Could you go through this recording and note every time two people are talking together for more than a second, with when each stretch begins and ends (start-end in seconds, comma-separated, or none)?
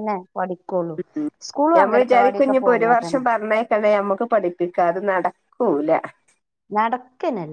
1.8-3.2